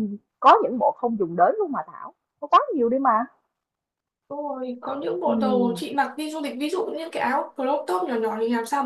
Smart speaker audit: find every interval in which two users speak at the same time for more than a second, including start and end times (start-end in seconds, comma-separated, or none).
none